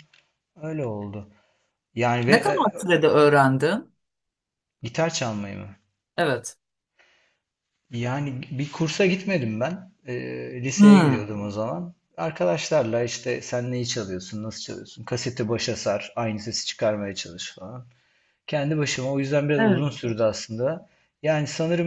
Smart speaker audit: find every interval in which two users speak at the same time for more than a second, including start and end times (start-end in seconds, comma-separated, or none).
none